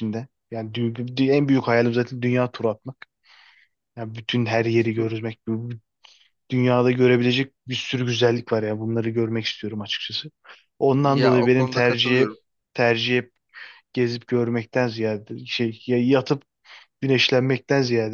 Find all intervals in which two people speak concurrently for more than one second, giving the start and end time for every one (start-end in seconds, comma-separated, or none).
11.0-12.3